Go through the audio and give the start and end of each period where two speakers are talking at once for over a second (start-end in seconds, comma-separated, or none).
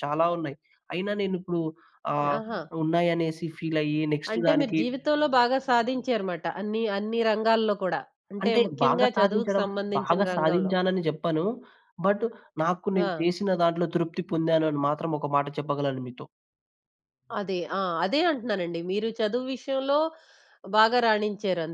8.4-10.7